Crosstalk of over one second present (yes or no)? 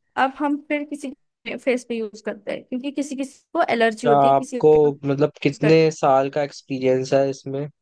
yes